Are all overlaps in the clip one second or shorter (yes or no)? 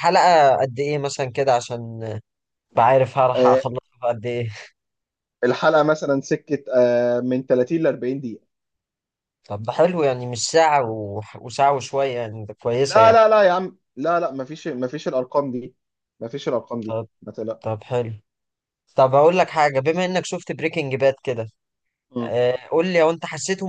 yes